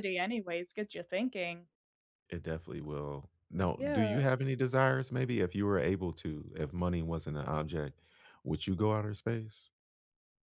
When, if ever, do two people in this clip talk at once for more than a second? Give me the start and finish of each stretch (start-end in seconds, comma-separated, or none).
none